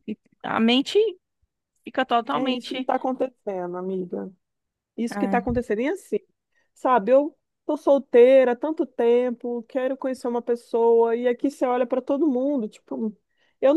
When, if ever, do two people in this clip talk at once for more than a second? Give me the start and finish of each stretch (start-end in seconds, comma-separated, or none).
none